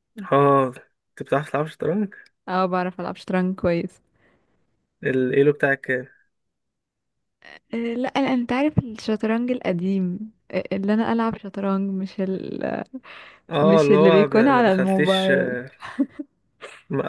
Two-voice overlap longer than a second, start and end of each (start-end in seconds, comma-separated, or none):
13.6-15.3